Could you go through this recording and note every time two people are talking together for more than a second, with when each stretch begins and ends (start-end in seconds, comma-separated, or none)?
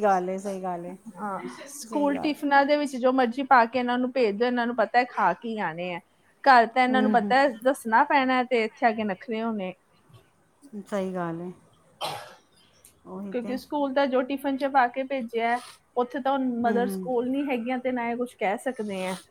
none